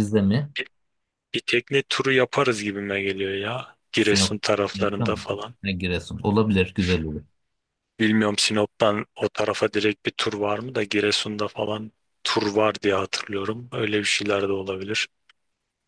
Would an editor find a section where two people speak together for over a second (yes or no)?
yes